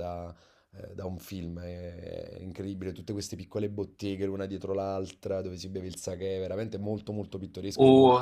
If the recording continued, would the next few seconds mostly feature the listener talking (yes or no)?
yes